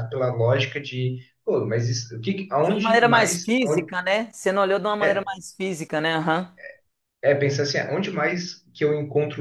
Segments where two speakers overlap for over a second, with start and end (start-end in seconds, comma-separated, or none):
2.7-3.9